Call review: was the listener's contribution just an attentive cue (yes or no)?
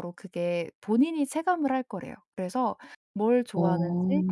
yes